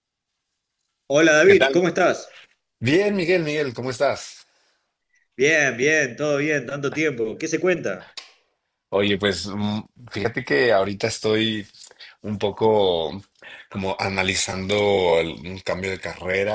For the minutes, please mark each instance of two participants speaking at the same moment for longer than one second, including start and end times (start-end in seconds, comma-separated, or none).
none